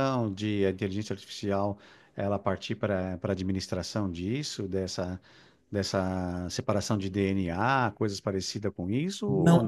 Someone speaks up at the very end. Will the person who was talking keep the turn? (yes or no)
no